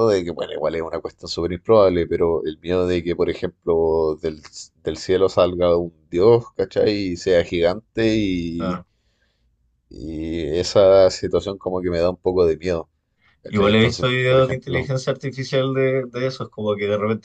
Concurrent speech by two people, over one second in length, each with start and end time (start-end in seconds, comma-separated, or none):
13.4-14.9